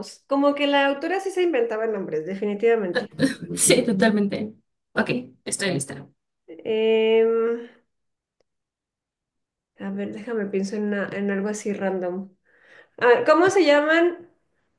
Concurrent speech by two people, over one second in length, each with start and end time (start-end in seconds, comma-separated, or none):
none